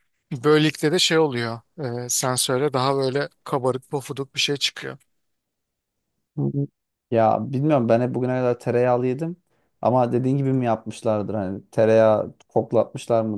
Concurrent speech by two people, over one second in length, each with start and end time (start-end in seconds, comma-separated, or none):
none